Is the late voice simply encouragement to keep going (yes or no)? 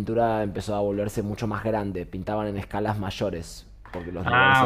no